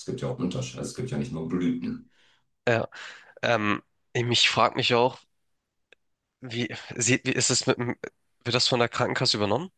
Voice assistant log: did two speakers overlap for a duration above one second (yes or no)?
no